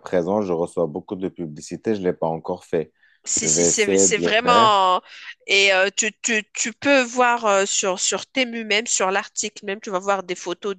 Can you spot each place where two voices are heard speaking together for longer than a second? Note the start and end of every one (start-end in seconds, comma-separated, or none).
3.4-4.9